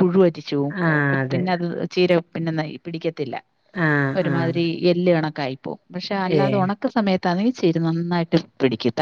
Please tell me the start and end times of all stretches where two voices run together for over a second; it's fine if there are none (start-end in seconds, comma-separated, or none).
none